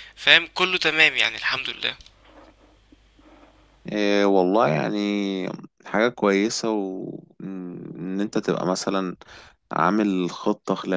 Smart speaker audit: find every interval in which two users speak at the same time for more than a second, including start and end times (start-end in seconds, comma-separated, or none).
none